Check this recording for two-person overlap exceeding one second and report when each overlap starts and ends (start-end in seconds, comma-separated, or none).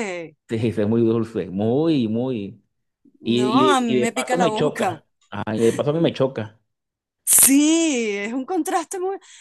3.4-5.0